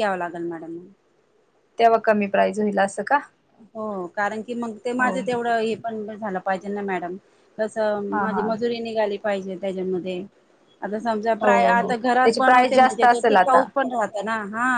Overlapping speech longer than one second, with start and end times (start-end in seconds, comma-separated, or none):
11.4-13.6